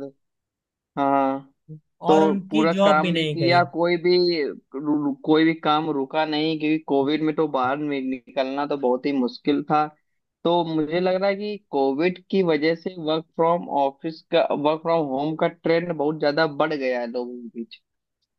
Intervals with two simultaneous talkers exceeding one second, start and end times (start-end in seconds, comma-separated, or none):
2.1-3.6